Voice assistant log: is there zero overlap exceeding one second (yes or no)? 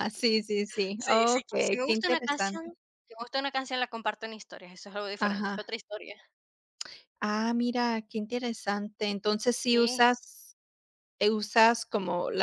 no